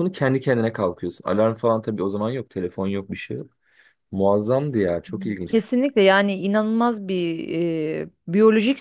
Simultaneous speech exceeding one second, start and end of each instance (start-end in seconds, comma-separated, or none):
none